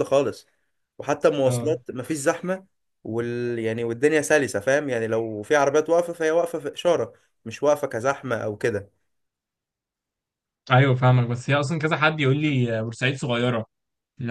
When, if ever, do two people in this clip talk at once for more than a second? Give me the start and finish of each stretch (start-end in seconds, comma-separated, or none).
none